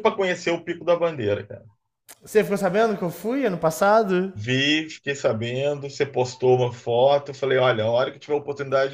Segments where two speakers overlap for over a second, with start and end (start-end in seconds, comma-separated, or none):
none